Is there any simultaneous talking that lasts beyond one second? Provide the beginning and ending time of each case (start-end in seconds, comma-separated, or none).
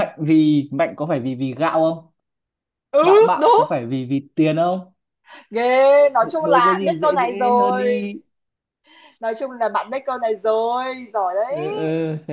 6.2-8.1